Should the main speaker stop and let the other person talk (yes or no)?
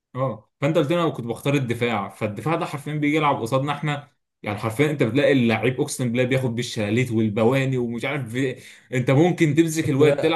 no